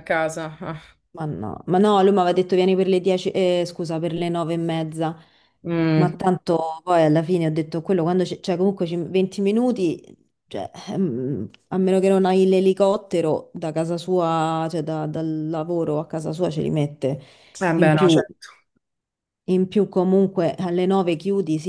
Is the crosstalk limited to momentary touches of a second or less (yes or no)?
yes